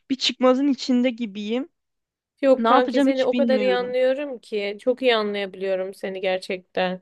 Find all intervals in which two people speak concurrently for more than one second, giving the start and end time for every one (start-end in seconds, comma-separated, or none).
2.6-4.0